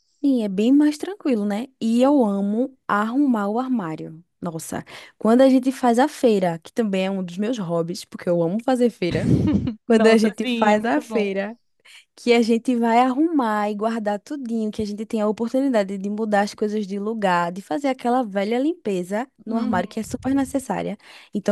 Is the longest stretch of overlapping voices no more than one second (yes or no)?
no